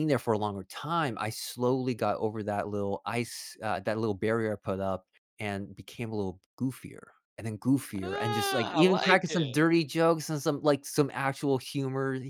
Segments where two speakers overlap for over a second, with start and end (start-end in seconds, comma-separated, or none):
8.0-9.6